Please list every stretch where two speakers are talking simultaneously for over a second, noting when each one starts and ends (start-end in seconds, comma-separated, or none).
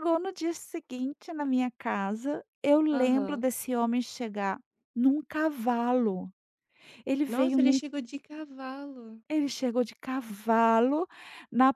none